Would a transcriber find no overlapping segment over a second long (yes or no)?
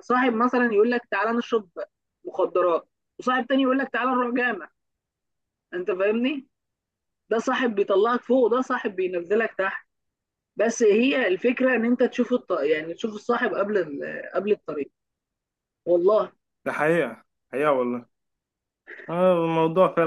yes